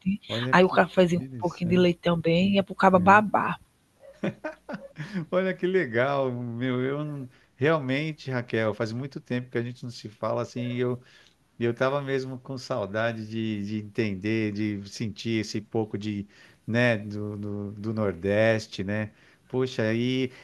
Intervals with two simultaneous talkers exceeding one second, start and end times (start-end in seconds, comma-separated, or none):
0.5-1.9